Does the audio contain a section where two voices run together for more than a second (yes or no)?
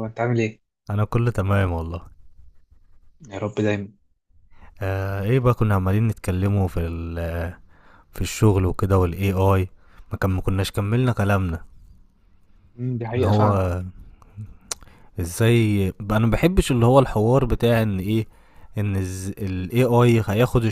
no